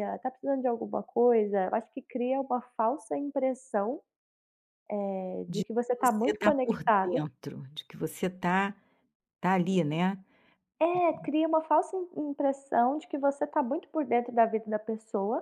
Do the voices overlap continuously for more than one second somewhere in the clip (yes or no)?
yes